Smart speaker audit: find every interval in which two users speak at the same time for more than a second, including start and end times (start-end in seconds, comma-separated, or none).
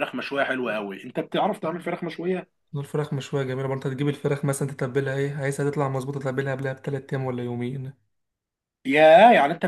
none